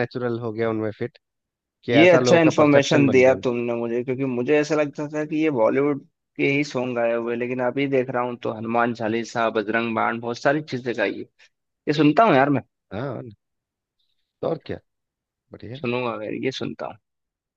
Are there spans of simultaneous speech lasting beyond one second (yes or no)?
yes